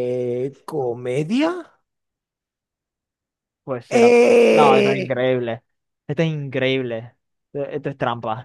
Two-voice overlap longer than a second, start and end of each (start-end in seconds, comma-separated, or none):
3.9-5.3